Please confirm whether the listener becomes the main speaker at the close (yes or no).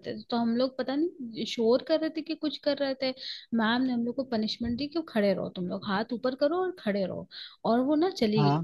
no